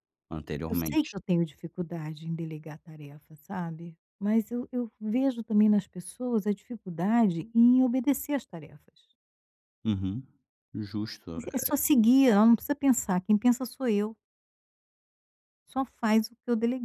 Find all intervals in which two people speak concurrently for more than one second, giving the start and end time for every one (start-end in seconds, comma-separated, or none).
none